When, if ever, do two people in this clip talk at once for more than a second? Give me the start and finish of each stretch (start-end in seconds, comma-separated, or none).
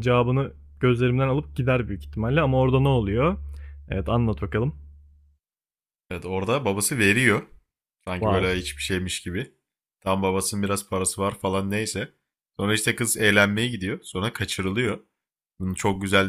none